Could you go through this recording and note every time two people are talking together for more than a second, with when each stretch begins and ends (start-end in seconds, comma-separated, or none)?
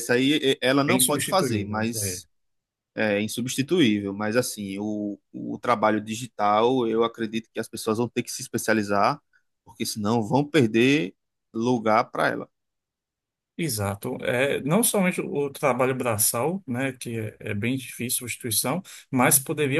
0.9-2.2